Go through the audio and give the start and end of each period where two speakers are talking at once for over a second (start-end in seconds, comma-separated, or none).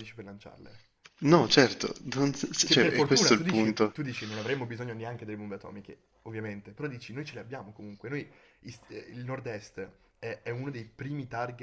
2.6-4.0